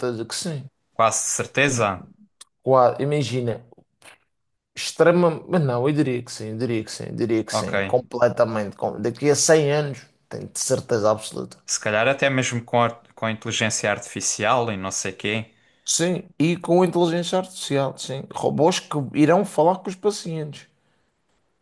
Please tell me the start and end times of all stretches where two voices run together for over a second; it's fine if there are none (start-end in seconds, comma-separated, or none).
none